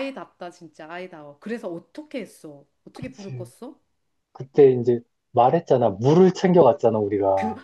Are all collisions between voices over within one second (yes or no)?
yes